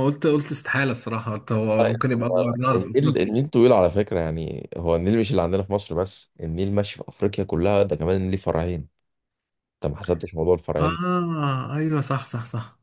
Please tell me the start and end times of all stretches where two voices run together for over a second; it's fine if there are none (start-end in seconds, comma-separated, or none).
1.8-3.3